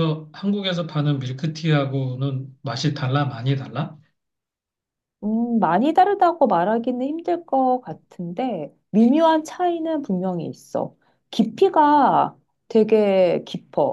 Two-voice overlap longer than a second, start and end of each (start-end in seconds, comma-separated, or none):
none